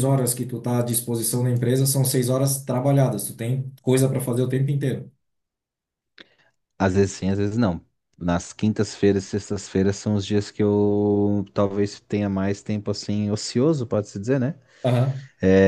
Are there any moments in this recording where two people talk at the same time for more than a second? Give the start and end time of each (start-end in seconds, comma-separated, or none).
none